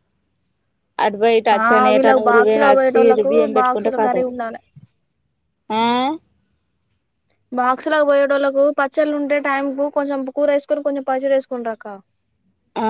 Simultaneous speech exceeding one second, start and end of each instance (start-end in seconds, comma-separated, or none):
1.6-4.2